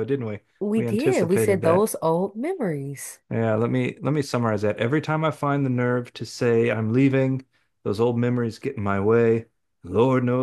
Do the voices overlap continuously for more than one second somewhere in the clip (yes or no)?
yes